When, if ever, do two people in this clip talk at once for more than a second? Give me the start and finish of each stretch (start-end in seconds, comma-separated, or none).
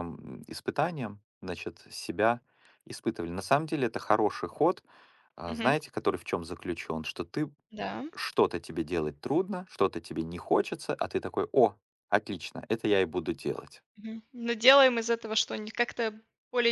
none